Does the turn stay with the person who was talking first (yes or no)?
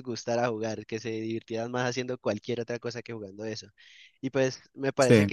yes